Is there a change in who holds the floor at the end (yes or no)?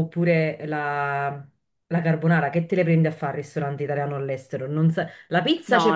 no